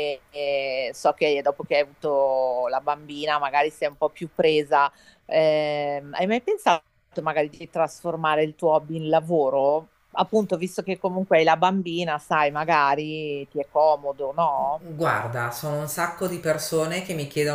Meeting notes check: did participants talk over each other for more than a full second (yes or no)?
no